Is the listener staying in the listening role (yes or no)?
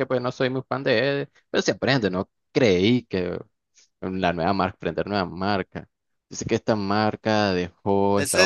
no